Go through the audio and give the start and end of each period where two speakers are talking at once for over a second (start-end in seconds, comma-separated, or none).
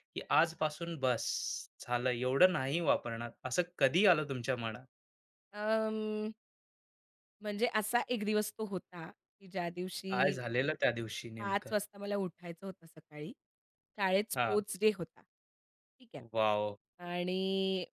none